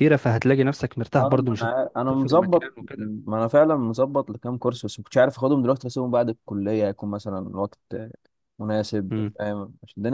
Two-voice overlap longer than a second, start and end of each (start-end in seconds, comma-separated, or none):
1.2-3.1